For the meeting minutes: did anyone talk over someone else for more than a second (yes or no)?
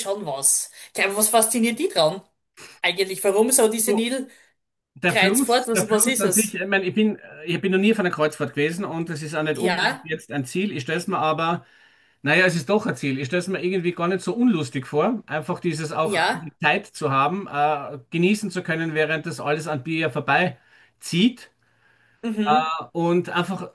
yes